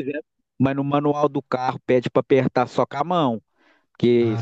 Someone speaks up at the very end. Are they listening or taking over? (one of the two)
listening